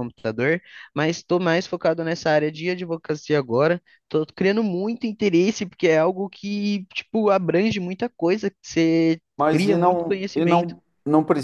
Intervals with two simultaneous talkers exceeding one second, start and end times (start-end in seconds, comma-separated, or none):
9.4-10.7